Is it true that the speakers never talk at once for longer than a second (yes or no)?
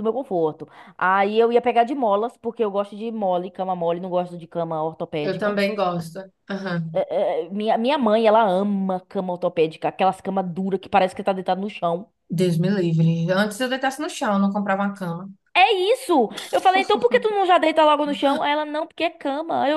yes